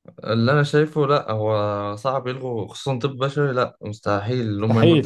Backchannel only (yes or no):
yes